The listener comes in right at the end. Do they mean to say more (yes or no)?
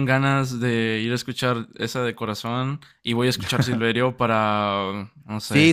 yes